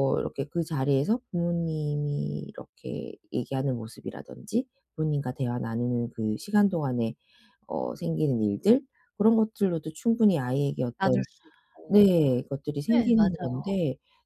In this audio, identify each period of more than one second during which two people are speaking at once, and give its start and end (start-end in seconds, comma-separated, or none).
none